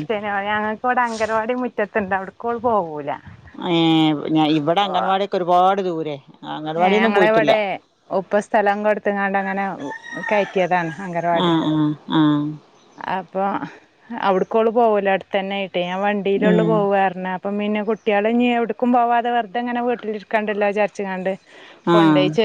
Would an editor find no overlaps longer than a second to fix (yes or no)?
yes